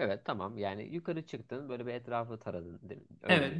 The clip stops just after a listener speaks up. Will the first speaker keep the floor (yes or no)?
no